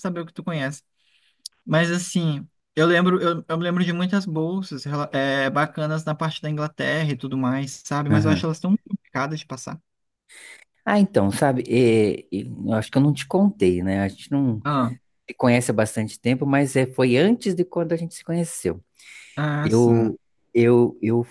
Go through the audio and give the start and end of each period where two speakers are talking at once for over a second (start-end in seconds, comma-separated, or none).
none